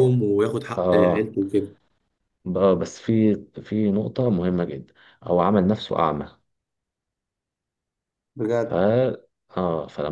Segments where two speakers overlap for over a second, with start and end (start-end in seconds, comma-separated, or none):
none